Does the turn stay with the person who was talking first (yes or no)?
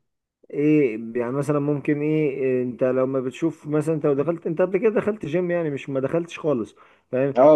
yes